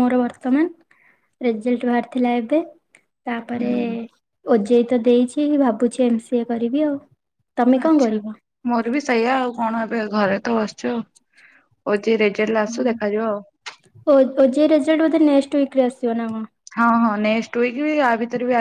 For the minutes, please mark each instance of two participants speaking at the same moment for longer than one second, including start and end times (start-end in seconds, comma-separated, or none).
none